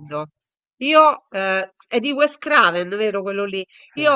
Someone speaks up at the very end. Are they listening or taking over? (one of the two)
listening